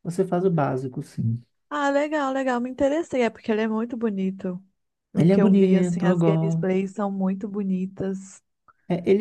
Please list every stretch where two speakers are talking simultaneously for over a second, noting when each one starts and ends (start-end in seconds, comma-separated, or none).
5.2-6.7